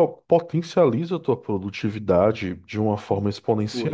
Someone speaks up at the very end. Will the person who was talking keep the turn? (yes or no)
yes